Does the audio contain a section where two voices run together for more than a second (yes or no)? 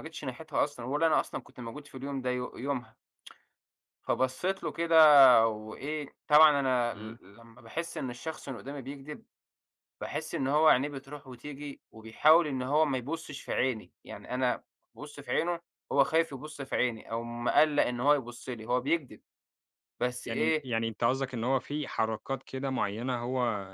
no